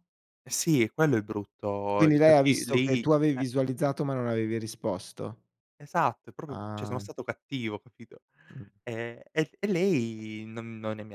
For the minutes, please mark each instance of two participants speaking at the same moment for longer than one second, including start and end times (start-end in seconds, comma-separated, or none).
2.0-3.4